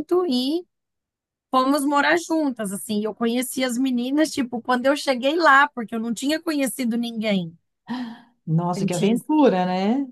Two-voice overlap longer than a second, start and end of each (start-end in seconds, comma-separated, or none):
none